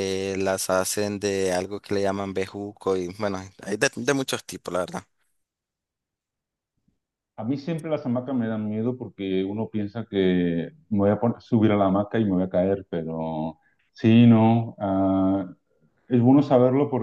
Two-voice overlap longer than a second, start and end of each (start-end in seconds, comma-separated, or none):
none